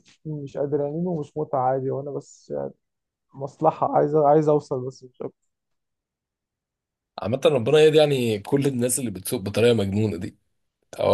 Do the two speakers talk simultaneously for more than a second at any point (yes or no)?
no